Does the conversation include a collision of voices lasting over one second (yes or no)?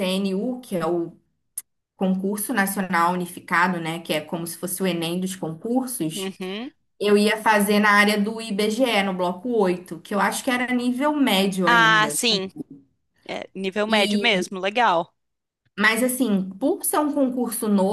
no